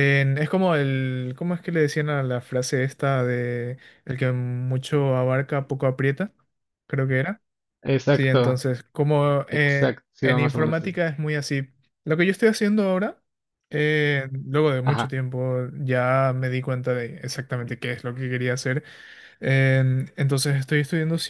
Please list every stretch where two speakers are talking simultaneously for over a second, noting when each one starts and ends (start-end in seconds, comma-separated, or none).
9.5-10.9